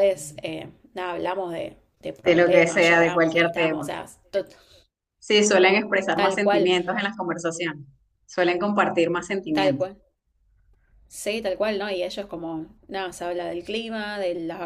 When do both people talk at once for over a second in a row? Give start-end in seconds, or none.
2.2-3.9